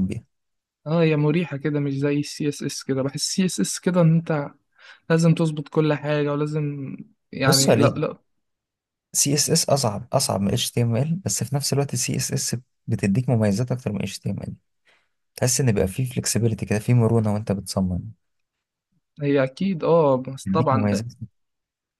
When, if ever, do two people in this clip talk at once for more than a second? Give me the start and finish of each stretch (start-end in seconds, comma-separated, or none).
none